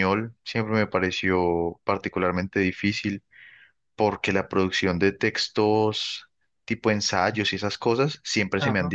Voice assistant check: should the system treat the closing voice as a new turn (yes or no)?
no